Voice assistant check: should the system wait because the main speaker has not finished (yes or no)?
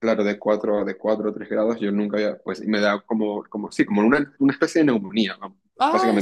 yes